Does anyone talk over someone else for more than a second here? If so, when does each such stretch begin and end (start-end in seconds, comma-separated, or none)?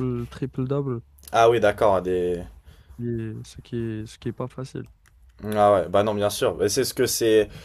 none